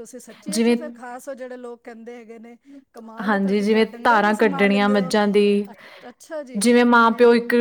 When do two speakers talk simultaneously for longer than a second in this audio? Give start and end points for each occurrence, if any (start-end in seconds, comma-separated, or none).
3.3-5.1